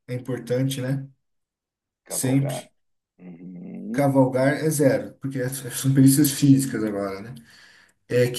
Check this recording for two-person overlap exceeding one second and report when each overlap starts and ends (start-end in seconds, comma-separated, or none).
none